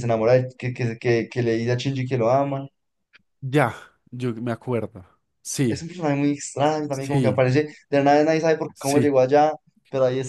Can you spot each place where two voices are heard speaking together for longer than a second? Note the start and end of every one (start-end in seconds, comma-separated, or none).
none